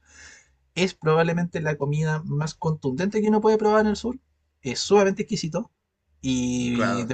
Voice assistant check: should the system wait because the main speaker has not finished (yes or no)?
yes